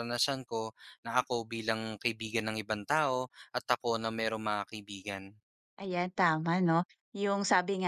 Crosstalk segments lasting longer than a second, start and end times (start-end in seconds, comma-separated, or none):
none